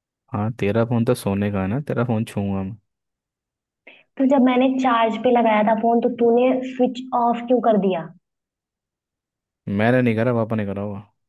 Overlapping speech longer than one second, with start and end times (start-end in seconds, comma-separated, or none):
none